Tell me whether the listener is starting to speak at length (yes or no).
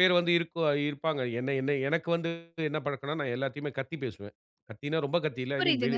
no